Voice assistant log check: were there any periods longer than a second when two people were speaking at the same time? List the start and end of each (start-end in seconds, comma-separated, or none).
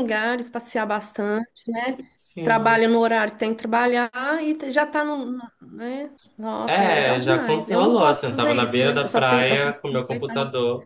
6.7-10.3